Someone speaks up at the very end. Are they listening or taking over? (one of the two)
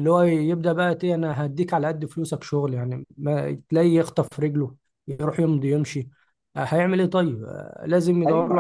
taking over